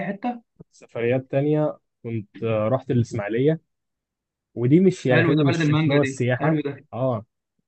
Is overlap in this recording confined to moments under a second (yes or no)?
no